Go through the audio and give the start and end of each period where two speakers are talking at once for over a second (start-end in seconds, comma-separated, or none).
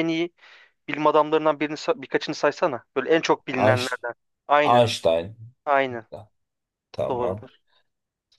none